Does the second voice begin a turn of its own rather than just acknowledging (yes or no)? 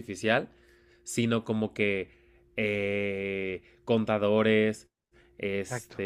no